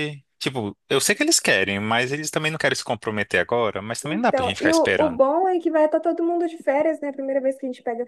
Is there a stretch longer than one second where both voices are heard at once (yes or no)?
yes